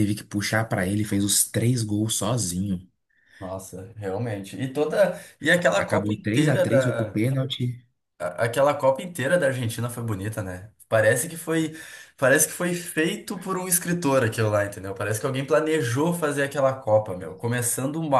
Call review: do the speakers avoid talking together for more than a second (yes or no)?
no